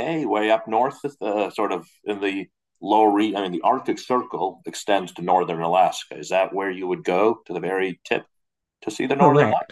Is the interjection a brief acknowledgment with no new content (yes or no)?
no